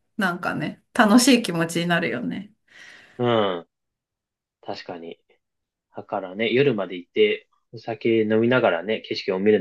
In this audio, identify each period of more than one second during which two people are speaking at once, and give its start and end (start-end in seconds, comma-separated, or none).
none